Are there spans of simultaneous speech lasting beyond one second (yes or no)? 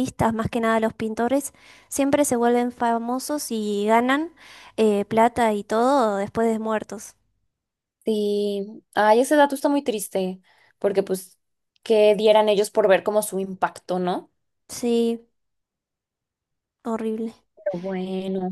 no